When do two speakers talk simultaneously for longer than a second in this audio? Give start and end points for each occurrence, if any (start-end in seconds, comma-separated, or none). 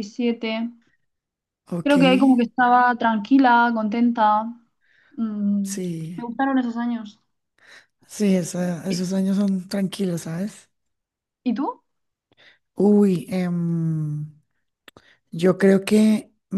none